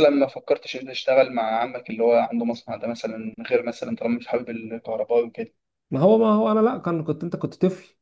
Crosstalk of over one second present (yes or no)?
no